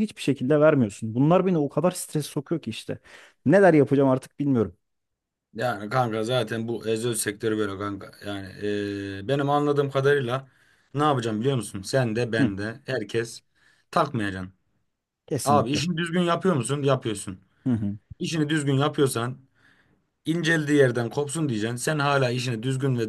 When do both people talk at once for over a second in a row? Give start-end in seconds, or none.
none